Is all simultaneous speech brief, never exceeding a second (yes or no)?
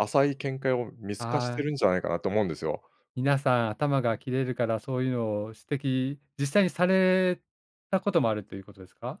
yes